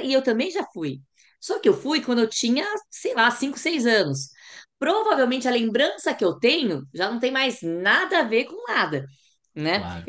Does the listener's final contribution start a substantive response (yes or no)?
no